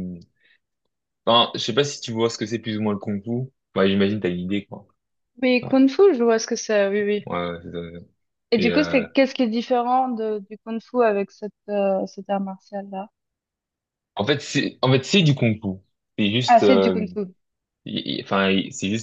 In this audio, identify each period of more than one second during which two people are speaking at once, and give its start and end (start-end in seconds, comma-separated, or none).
none